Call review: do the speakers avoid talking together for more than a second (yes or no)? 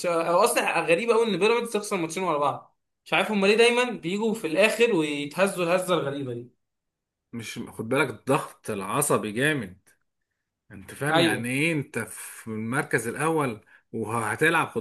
yes